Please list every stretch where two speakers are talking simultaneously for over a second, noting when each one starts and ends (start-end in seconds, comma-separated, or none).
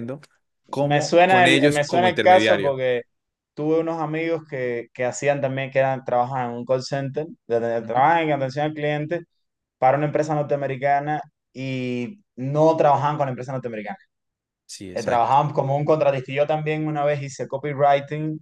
0.8-2.8